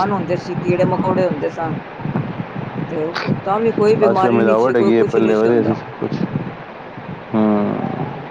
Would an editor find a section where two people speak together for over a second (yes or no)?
yes